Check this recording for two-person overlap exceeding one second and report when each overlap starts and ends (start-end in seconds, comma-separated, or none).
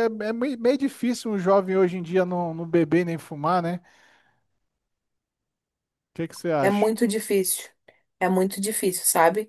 none